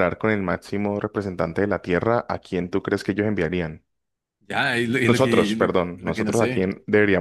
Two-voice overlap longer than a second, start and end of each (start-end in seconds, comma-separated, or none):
5.0-6.7